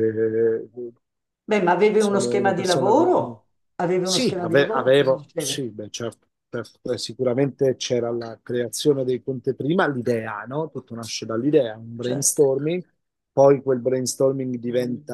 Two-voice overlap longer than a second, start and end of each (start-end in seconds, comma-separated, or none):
2.0-3.4, 4.0-5.7